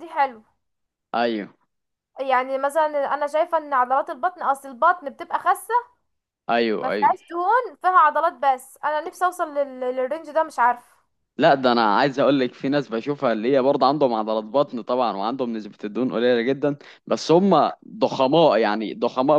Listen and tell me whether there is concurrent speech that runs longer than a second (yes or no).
no